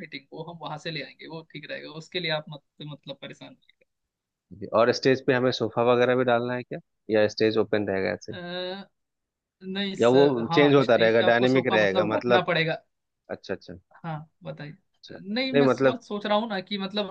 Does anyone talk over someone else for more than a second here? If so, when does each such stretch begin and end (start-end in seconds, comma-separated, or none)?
10.0-12.4